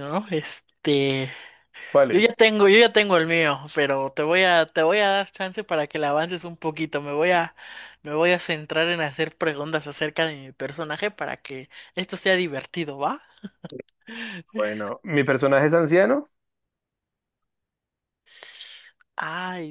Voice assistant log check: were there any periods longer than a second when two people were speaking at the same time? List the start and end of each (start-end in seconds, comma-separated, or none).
none